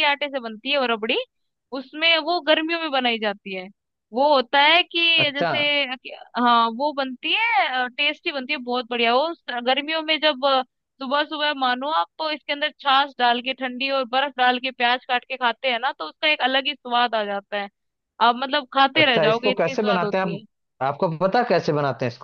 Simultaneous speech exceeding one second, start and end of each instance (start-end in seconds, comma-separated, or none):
19.0-20.4